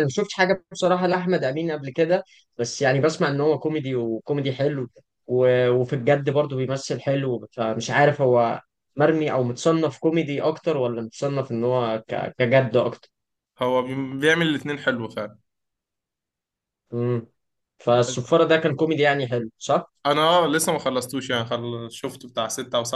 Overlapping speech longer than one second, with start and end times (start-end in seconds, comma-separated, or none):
none